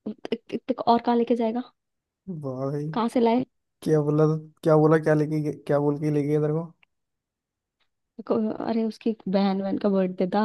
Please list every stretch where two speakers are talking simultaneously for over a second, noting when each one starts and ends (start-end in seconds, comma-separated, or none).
none